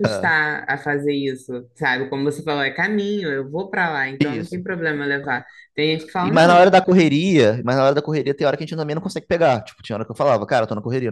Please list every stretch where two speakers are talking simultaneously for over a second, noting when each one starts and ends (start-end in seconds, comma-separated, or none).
none